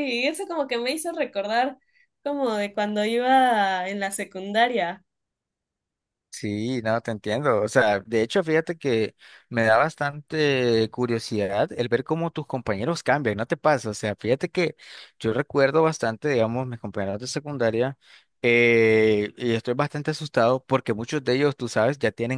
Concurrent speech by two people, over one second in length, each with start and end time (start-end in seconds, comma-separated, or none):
none